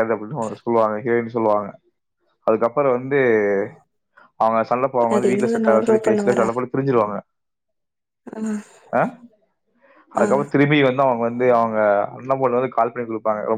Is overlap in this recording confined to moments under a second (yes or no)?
no